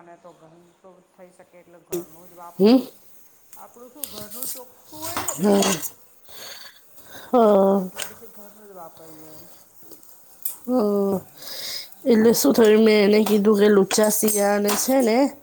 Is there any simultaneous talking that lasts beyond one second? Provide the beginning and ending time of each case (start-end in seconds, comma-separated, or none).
none